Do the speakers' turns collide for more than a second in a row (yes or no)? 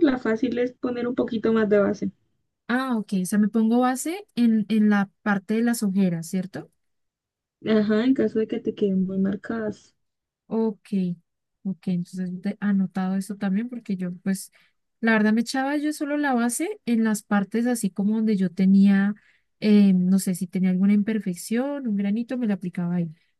no